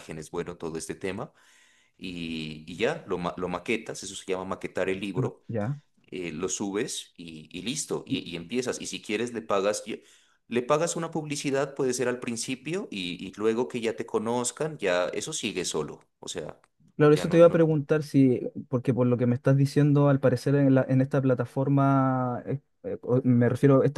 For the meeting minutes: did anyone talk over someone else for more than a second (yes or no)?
no